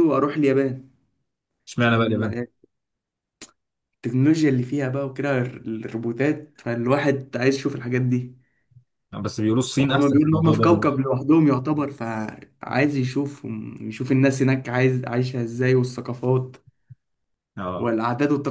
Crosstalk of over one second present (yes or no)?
yes